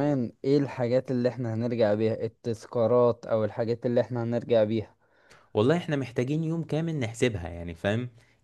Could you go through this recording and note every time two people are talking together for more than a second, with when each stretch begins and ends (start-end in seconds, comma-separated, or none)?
none